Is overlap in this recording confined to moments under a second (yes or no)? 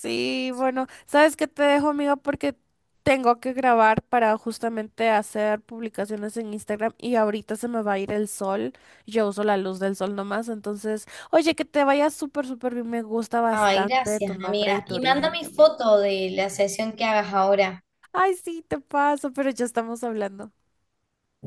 no